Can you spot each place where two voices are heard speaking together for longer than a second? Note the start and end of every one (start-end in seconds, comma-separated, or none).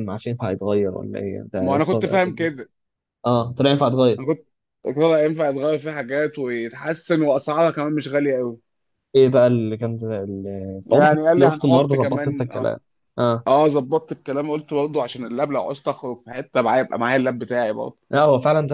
10.8-12.7